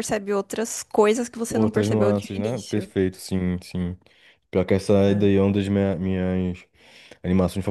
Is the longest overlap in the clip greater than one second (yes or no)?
yes